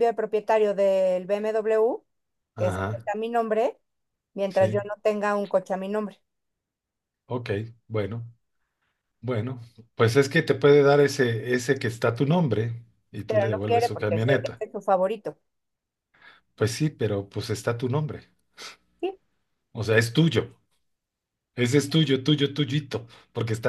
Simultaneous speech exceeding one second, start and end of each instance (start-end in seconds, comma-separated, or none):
13.3-14.6